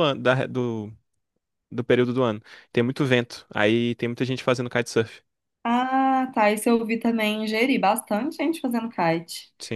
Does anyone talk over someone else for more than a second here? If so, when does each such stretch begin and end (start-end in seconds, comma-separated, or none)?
none